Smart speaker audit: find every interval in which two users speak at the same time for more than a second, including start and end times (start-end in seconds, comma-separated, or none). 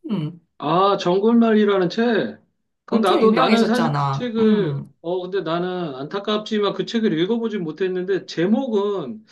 2.9-4.9